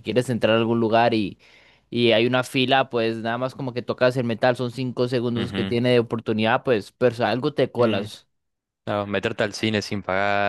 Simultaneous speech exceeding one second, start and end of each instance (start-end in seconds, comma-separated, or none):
none